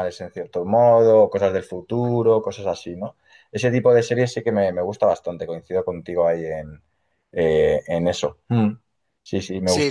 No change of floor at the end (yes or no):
no